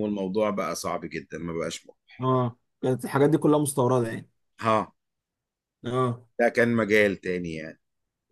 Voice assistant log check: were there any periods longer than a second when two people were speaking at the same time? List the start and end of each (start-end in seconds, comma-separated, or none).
none